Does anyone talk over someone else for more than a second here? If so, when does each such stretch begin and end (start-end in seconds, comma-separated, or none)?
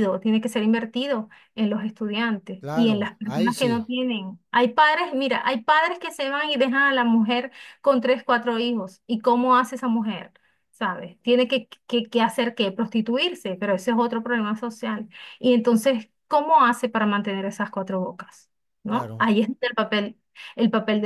2.6-3.8